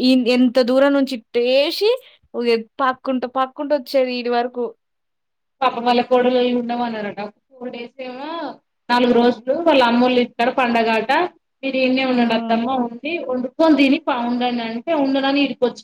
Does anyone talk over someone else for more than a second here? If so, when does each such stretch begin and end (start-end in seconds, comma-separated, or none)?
none